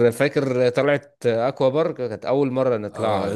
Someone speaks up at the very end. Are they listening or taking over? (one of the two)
taking over